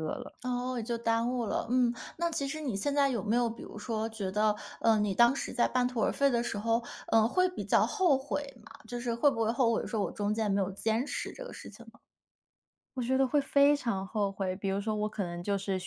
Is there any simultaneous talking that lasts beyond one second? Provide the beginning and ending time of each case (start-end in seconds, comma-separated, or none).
none